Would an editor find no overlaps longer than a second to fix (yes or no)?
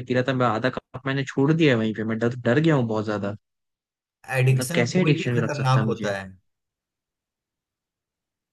no